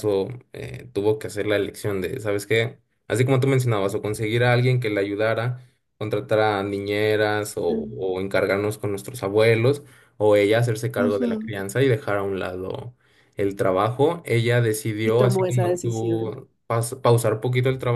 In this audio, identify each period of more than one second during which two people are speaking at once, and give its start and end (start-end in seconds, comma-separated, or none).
15.0-16.4